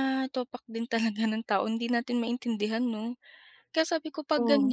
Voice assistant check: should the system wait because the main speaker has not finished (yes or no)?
yes